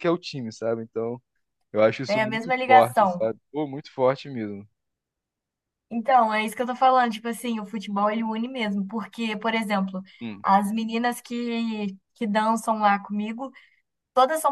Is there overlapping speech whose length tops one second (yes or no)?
yes